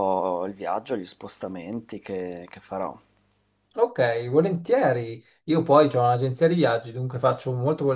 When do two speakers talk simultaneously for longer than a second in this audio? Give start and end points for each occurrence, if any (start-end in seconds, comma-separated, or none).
none